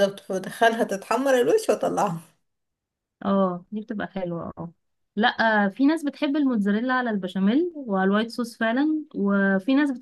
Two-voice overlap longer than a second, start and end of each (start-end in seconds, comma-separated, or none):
none